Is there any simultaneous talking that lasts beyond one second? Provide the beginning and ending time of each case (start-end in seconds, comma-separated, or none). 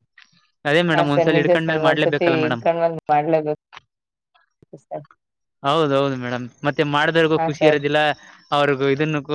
0.9-2.6